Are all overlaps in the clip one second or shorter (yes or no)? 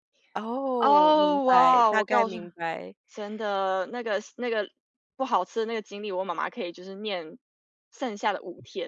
no